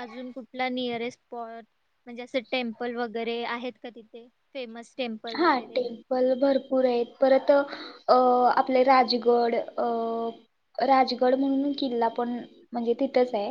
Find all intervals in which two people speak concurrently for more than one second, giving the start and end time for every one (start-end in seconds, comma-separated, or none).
none